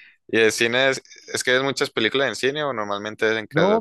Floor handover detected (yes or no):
yes